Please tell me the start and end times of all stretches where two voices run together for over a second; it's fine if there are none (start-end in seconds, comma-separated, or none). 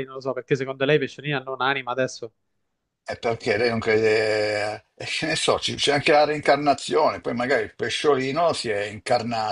none